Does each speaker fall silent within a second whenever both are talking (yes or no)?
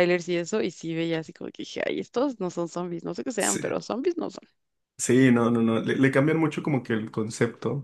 yes